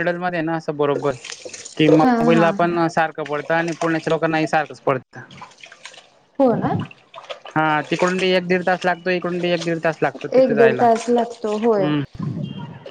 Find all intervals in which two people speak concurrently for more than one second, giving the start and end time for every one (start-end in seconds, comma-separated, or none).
10.4-11.9